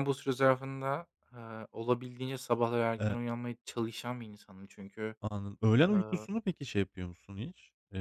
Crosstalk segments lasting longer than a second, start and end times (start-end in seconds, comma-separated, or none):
none